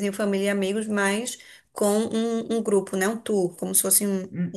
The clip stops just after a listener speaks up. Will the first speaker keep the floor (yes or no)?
no